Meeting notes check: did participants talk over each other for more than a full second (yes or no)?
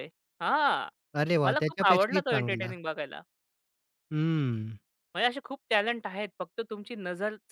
yes